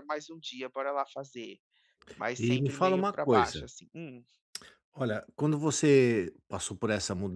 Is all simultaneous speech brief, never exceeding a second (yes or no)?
no